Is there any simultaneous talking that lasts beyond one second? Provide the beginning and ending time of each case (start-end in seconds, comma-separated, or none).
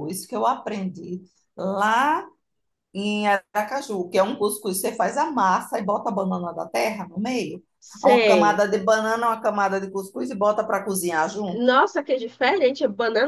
none